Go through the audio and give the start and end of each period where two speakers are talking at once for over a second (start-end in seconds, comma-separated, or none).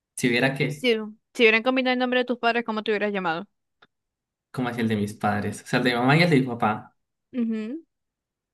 none